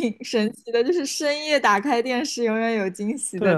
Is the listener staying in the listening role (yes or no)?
no